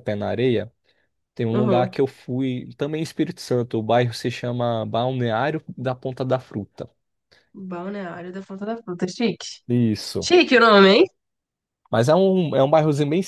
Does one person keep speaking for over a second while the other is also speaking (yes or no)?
no